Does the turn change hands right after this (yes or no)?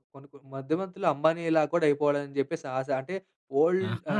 no